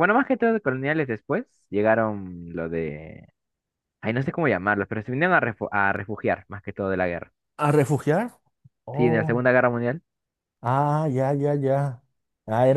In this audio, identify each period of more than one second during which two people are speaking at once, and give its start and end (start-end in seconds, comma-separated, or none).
none